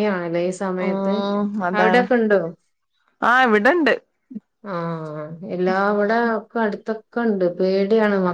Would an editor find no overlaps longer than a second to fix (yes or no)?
yes